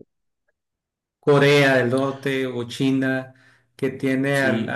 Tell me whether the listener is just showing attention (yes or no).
yes